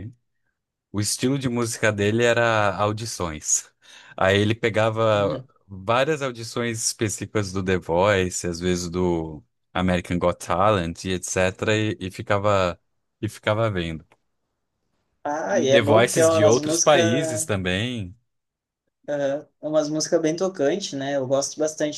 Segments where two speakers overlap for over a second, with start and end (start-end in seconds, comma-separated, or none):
15.5-17.5